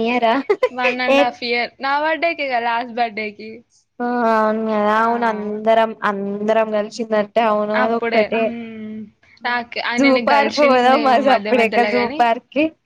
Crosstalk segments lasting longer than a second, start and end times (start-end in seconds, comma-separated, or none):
10.0-12.2